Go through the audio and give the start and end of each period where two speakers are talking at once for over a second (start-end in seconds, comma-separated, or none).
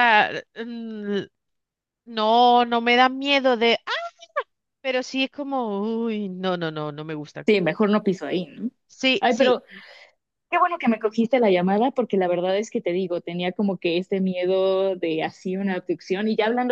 none